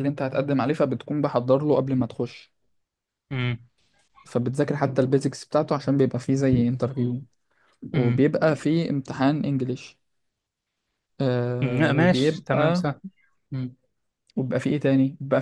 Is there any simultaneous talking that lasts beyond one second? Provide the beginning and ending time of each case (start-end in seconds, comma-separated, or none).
11.6-12.8